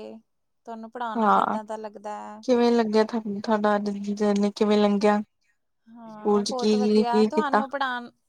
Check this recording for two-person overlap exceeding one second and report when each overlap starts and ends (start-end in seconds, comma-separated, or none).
none